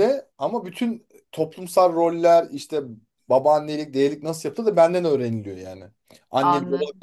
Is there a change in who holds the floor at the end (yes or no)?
yes